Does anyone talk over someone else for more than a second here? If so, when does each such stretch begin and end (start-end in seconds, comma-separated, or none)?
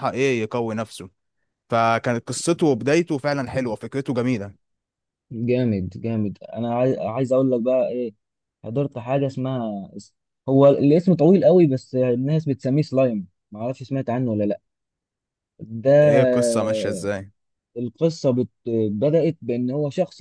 none